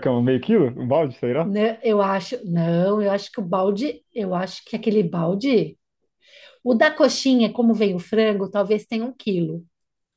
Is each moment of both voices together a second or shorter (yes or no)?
yes